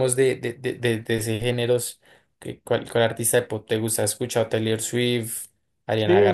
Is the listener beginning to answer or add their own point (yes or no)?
yes